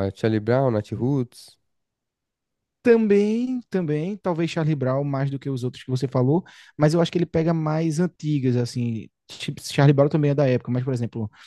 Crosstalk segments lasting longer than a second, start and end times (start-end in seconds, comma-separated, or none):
none